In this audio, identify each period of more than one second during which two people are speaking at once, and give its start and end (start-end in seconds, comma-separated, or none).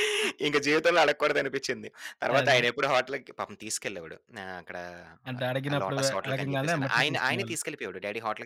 5.7-7.6